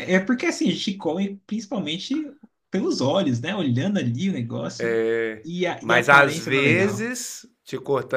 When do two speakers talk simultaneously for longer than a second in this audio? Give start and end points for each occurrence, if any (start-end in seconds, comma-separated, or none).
5.4-7.1